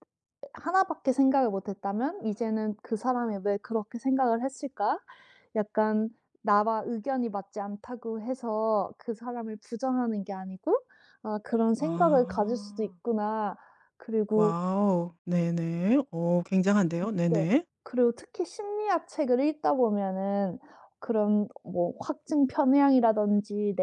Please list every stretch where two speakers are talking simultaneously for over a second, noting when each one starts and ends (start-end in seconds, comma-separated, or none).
11.8-13.0